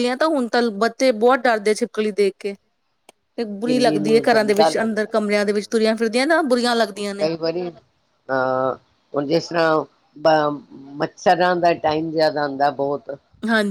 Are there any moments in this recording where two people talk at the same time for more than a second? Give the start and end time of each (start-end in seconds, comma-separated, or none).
3.5-5.9